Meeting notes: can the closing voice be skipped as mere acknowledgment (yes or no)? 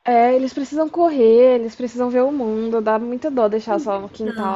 no